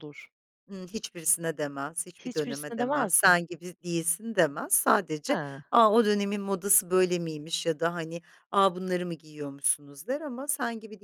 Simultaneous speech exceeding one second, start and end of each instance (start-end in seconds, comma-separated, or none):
2.2-3.4